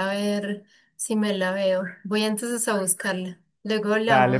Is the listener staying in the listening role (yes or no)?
no